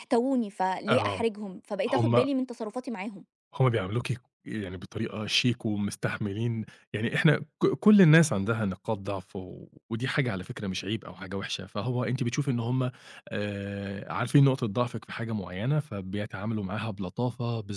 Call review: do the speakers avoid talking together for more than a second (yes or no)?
yes